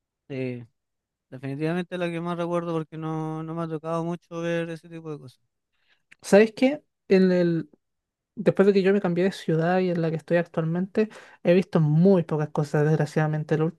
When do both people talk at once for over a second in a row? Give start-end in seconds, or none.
none